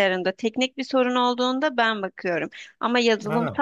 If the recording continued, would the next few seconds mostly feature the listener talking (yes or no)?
no